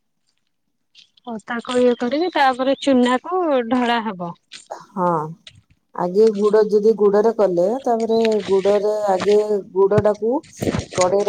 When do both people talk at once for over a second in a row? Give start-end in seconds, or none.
none